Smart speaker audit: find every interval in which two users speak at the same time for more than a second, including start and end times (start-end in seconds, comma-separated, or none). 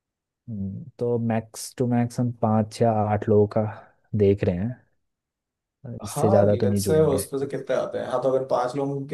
6.0-7.2